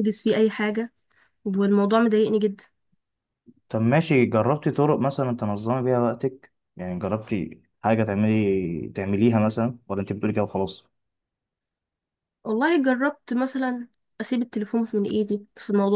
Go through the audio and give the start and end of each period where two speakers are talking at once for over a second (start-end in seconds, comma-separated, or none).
none